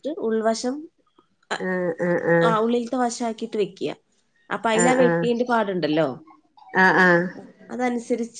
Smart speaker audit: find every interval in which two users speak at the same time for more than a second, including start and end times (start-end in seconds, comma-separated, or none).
none